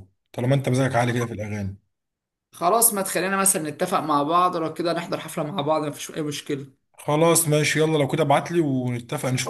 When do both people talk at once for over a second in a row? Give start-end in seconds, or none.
none